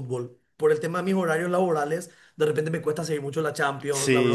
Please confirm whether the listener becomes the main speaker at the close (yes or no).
yes